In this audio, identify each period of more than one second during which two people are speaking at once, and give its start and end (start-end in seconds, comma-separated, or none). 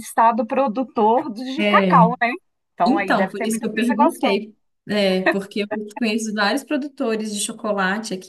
2.8-4.5